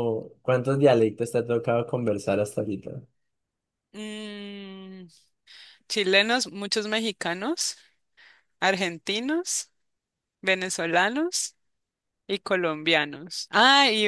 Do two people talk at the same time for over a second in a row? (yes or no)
no